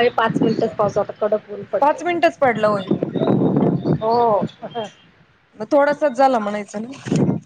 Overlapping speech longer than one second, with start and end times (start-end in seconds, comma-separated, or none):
none